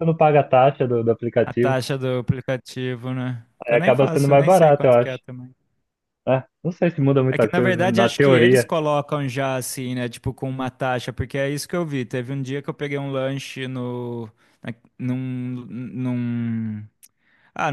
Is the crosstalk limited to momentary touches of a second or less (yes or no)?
no